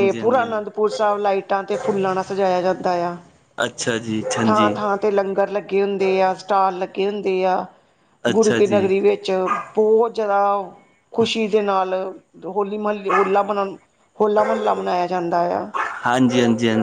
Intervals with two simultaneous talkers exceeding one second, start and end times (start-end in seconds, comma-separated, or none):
none